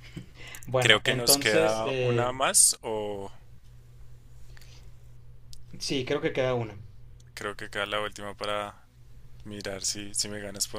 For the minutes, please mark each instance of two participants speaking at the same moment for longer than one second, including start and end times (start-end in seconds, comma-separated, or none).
0.8-2.3